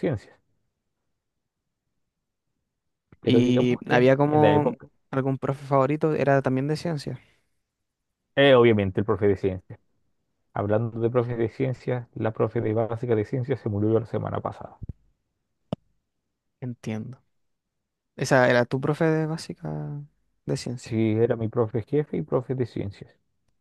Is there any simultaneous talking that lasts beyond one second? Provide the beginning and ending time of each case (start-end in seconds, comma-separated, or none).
3.2-4.7